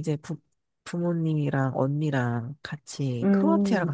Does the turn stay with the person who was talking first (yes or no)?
no